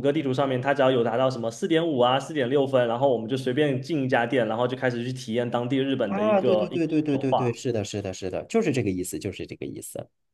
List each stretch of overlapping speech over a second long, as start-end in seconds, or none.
6.0-7.4